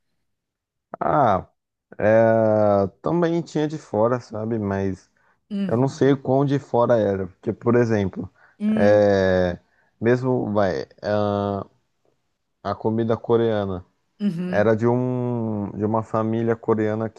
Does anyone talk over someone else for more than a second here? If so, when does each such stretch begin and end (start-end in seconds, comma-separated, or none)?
none